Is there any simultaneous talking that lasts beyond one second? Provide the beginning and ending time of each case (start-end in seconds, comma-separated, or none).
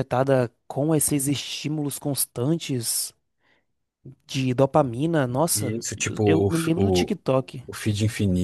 5.5-7.2